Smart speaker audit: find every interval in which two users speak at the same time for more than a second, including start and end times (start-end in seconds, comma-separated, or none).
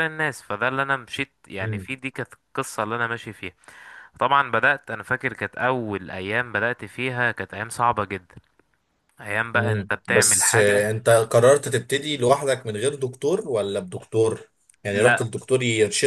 9.5-10.9